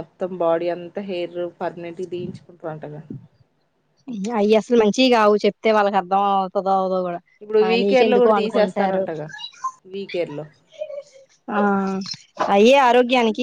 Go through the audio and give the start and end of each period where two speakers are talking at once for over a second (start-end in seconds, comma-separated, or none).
7.8-9.0